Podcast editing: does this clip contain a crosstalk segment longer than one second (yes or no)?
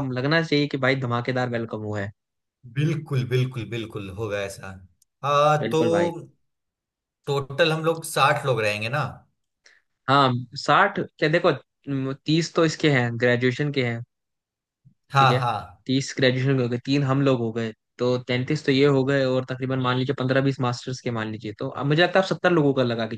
no